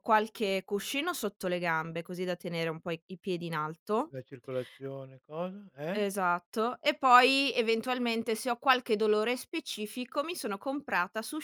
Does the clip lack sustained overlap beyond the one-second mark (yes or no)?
yes